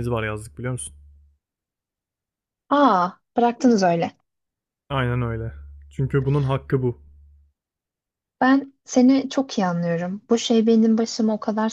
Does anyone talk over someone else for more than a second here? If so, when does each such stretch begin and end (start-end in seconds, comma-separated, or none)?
none